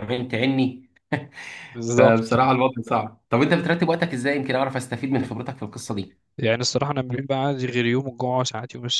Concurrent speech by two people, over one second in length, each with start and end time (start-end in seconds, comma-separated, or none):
none